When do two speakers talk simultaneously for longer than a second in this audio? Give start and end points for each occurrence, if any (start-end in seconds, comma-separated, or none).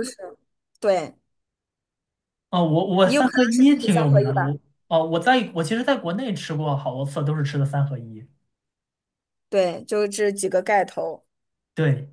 3.0-4.6